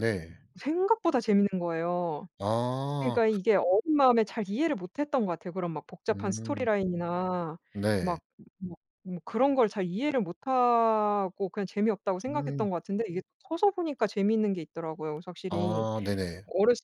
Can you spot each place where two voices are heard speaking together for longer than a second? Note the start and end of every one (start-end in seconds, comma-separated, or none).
none